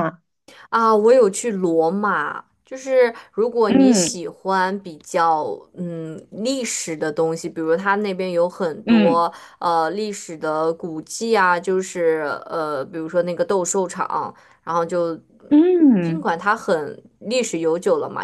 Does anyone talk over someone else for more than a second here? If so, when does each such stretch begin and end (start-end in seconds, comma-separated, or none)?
none